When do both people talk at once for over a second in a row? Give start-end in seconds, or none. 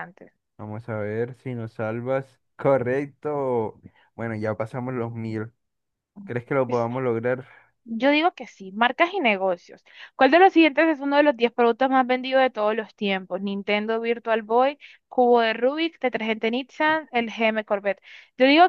none